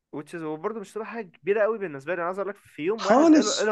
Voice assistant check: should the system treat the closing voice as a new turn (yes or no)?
no